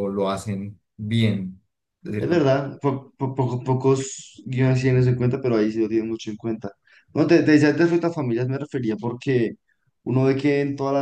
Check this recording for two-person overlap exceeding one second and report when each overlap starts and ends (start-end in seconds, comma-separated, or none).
none